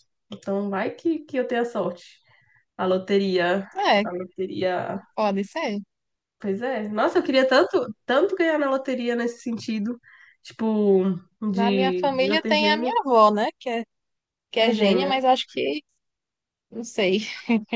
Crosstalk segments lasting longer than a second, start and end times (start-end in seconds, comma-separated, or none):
11.5-12.9